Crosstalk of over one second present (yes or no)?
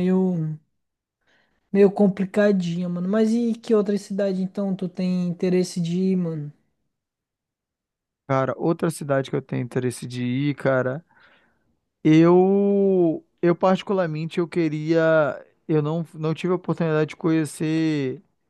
no